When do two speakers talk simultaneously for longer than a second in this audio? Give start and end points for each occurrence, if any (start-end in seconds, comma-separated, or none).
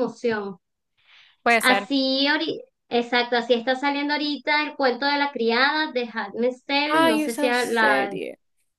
6.8-8.2